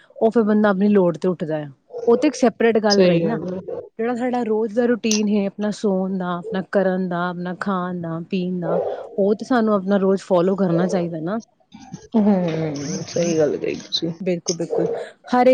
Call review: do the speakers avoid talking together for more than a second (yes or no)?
yes